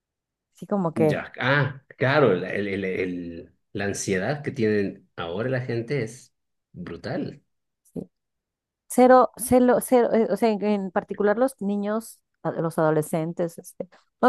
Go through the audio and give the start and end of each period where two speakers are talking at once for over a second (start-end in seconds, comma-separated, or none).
none